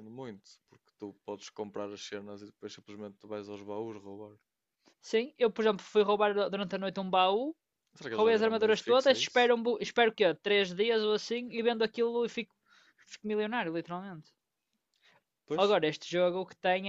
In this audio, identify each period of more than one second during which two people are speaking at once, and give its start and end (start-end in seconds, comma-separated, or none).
8.1-9.5